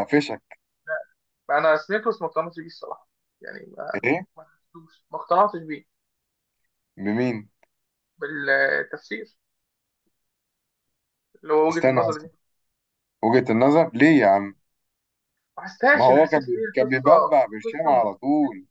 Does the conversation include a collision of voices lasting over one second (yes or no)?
yes